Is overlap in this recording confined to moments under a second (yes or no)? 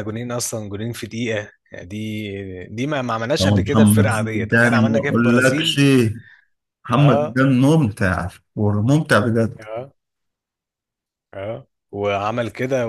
no